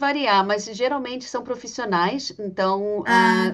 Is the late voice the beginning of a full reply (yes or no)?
no